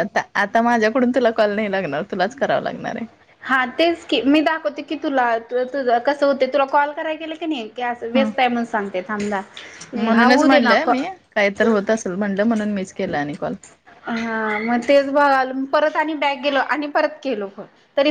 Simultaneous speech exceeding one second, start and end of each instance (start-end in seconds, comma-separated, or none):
none